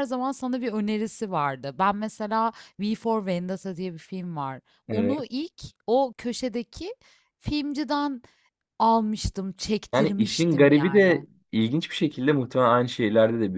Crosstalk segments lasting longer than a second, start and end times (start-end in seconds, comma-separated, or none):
9.9-11.2